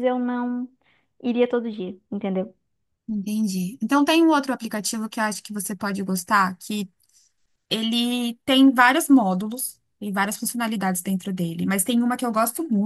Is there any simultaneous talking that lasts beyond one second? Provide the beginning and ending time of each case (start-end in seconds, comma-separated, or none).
none